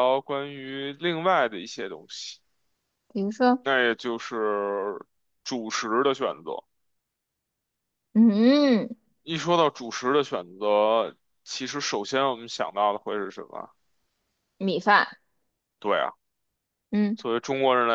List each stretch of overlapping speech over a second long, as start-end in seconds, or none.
none